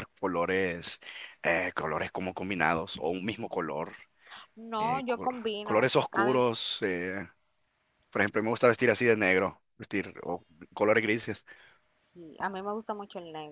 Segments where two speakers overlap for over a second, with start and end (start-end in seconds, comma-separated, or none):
4.8-6.4